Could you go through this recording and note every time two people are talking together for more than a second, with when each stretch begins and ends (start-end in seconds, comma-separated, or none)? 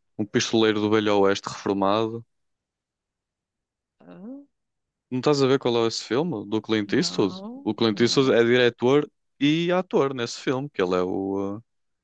6.8-8.4